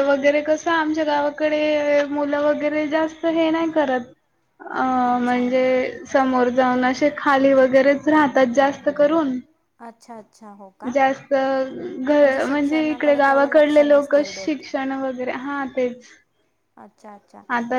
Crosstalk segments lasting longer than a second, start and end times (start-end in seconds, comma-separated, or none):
12.4-14.6